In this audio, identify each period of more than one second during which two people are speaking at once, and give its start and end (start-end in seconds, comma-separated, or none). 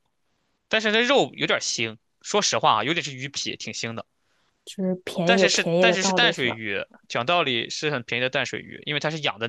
5.2-6.6